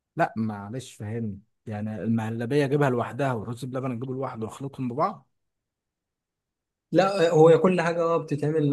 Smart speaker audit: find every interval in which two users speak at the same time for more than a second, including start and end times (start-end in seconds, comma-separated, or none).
none